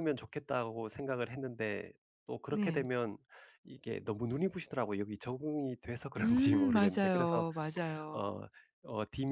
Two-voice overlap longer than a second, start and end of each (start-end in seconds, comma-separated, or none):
6.2-7.4